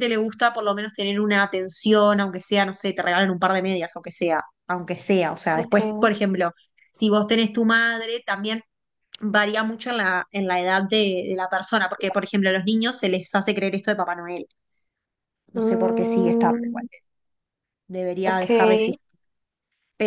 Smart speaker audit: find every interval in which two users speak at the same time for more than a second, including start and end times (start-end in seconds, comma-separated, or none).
15.6-16.8